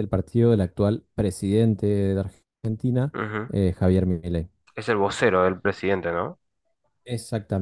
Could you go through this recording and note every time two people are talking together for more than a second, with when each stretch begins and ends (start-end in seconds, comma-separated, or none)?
none